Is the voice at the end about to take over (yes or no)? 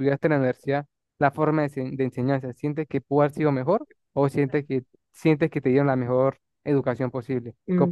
yes